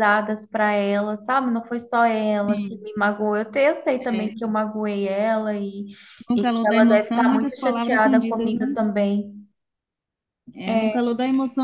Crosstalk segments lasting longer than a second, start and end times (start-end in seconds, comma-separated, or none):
6.3-8.8